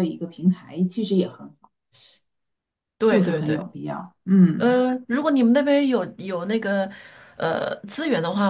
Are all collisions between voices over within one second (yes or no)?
yes